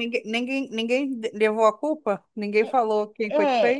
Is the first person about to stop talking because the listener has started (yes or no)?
yes